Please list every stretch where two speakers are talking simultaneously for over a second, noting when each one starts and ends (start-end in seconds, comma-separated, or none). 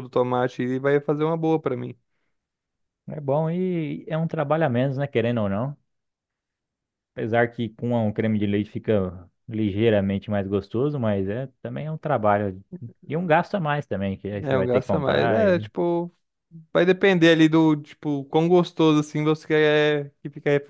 14.4-15.7